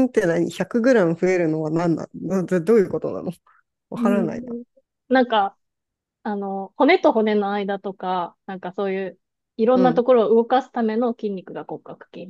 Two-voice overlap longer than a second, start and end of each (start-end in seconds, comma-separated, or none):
none